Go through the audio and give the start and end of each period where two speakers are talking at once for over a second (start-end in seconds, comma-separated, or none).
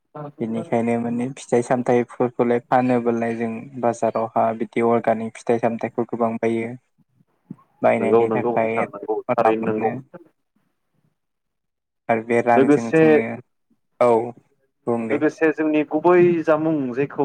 8.0-9.9